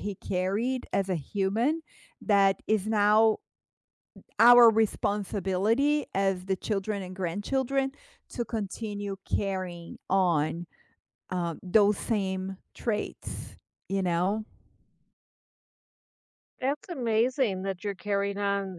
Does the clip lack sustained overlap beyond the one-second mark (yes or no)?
yes